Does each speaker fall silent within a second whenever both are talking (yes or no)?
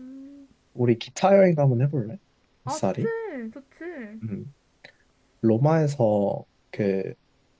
yes